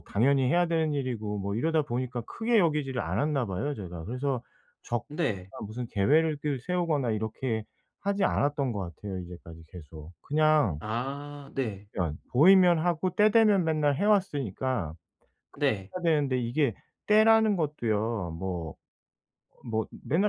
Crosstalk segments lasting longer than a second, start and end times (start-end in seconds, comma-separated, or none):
none